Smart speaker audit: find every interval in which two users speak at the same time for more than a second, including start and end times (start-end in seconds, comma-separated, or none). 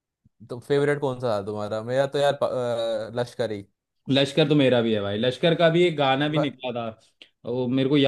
none